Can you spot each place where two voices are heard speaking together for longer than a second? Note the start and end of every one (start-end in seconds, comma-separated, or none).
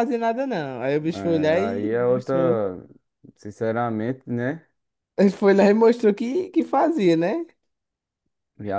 1.1-2.6